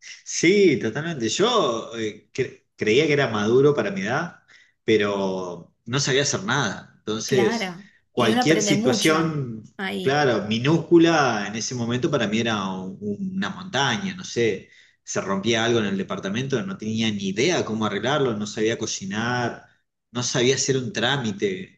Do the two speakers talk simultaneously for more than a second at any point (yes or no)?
yes